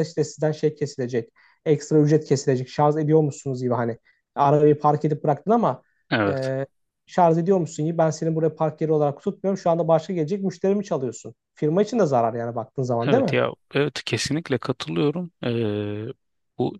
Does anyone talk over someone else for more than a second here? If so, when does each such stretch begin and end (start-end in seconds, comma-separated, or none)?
none